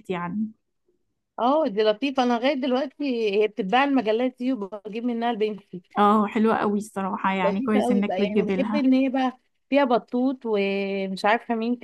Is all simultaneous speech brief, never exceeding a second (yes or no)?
no